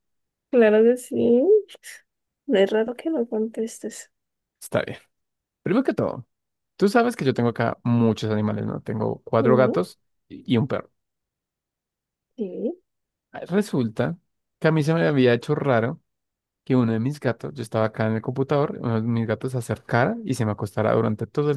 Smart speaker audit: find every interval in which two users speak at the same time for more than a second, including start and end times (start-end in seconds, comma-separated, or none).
none